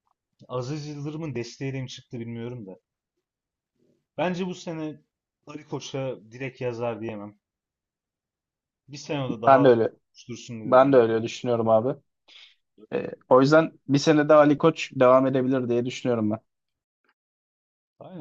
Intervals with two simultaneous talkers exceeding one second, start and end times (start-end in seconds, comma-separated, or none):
none